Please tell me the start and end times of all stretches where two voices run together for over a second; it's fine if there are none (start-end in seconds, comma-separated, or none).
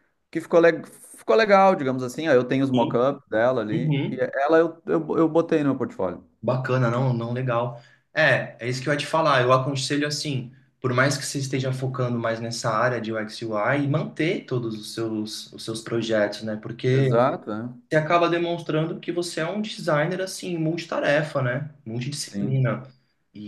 none